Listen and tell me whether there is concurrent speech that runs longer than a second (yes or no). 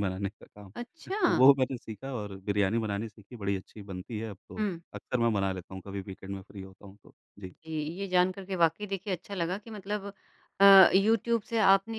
no